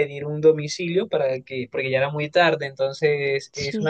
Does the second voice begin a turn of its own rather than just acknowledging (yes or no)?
no